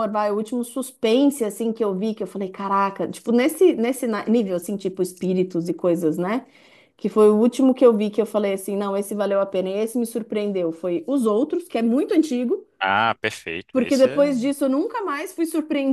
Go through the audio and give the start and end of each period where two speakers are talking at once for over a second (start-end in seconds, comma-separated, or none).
none